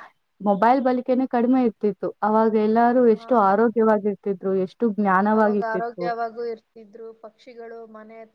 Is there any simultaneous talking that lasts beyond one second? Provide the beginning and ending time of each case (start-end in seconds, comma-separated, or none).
none